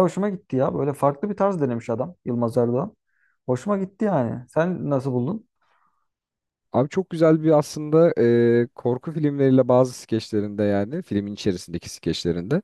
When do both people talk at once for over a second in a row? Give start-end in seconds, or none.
none